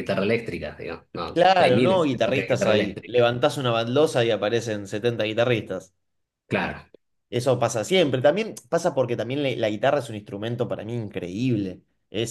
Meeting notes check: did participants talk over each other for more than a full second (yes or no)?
yes